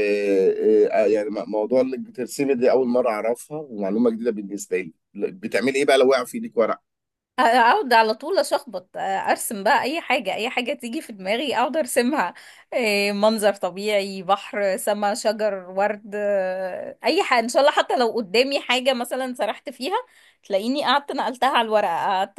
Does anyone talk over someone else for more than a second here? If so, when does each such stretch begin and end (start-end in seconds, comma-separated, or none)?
none